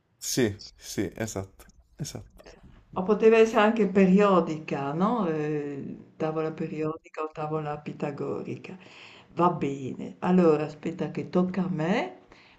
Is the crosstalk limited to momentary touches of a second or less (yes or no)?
yes